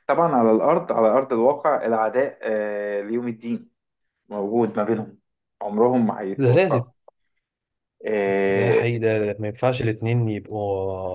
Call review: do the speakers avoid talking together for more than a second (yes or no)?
yes